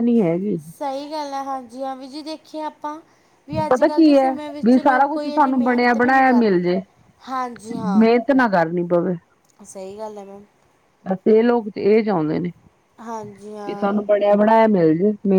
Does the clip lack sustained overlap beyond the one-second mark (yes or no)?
no